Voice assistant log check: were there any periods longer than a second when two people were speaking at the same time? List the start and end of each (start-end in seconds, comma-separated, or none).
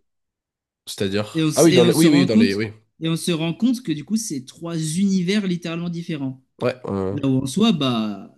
1.3-2.6